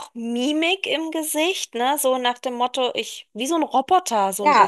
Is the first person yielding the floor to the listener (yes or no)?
yes